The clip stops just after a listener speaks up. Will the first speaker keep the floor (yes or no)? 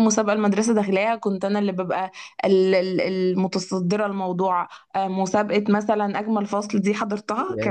no